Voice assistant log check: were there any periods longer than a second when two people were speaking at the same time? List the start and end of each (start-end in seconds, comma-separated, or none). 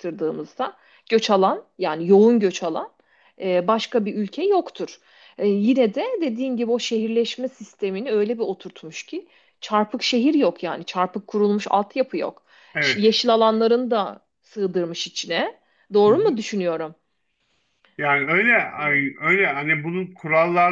none